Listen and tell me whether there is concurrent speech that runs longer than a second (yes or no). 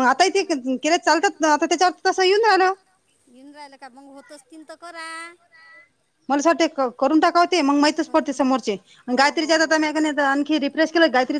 no